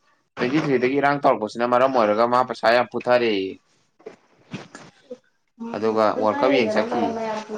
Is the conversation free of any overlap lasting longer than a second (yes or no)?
yes